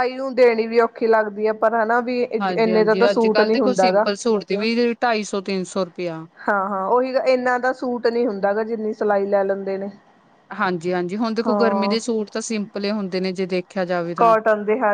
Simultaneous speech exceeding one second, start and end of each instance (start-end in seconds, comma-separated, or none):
2.4-4.0